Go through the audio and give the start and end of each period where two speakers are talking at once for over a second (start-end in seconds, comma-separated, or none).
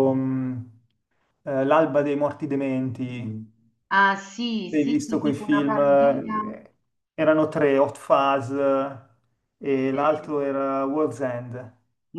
4.7-6.4